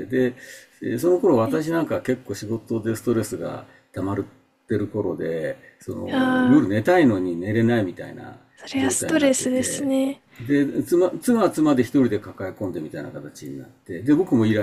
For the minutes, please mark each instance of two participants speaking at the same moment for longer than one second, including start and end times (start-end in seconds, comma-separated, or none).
8.8-10.0